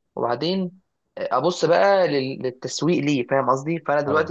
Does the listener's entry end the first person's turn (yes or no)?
no